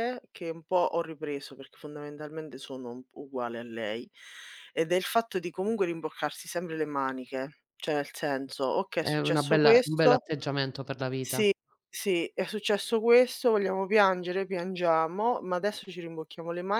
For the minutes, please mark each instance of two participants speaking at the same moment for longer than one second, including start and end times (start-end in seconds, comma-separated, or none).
9.0-10.2